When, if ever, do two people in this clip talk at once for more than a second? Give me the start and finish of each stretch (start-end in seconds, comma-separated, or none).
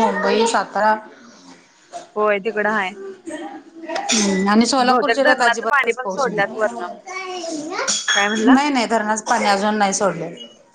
4.9-6.3